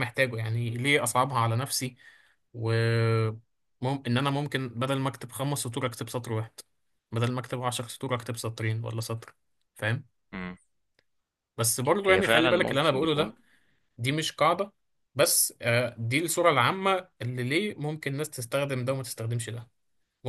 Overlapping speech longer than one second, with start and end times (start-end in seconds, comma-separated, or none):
12.0-13.3